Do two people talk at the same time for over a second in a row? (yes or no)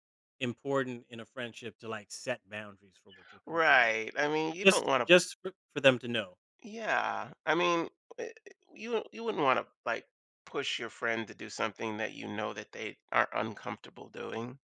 no